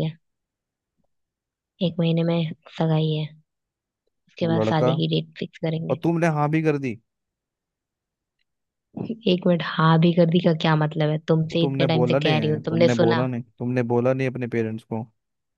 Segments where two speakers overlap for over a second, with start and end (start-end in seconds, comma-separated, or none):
11.5-13.3